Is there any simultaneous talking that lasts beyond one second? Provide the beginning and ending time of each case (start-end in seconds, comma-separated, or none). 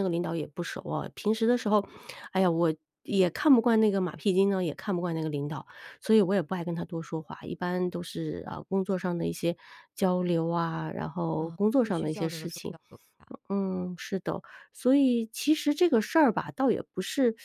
11.3-12.8